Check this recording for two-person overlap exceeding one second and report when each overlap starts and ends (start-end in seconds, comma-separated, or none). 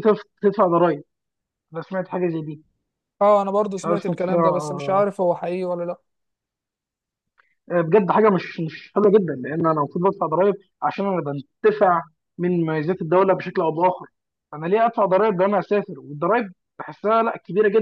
3.8-5.0